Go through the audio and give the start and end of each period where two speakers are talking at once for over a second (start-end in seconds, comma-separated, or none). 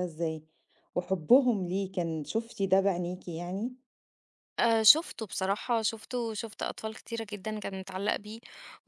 none